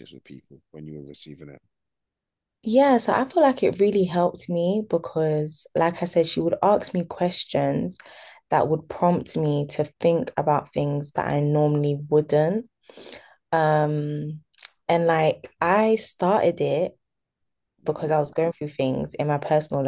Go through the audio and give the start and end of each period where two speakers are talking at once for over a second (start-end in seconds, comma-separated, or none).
none